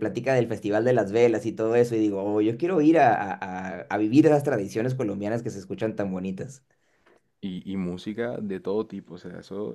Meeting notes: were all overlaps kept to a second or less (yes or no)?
yes